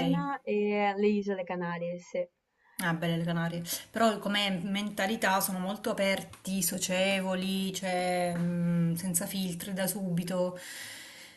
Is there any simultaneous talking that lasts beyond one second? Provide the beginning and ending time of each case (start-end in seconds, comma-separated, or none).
none